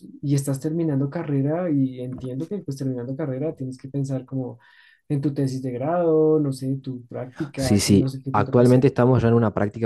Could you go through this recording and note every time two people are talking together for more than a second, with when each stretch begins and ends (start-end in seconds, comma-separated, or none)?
7.6-8.9